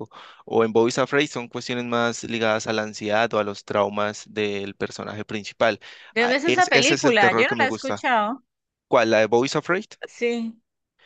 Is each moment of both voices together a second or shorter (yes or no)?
no